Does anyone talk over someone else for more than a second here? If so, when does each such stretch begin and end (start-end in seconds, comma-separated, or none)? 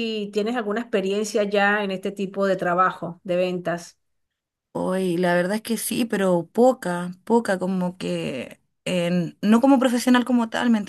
none